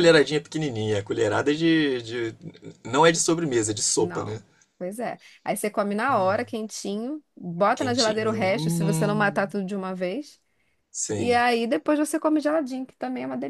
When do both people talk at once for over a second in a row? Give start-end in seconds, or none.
7.8-9.5